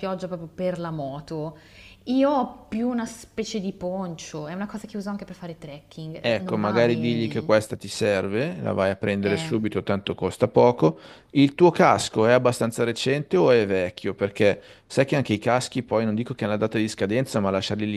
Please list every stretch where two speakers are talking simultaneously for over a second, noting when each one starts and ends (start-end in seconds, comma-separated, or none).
6.2-7.5